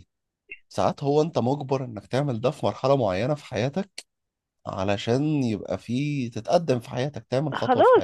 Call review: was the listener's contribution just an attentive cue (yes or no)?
no